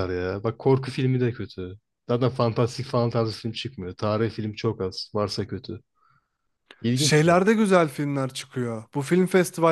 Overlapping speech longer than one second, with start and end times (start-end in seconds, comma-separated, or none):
none